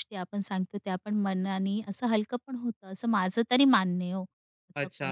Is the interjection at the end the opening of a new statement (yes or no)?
yes